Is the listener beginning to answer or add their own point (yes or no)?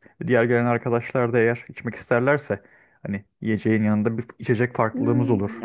yes